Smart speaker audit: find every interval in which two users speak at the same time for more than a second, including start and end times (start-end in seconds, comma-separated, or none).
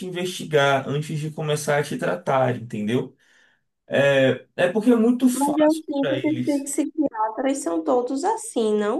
5.3-6.7